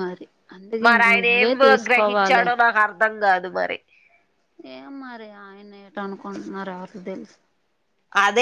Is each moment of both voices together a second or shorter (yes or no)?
no